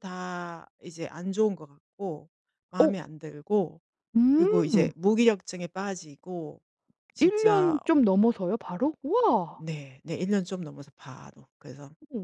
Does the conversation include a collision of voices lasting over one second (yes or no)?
no